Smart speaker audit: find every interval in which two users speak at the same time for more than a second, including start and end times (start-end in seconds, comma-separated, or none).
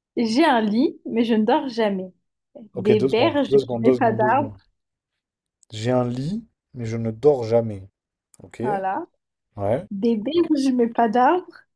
2.7-4.5